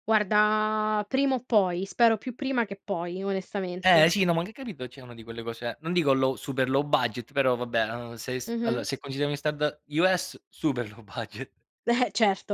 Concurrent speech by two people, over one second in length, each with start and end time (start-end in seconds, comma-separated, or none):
none